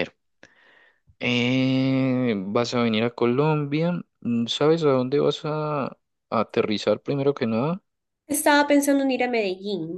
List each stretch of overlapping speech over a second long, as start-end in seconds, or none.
none